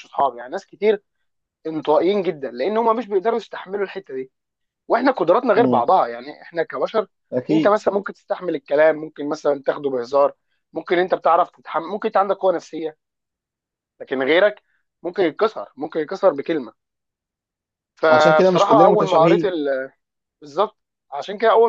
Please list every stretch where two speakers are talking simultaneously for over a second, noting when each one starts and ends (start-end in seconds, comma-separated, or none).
18.1-19.5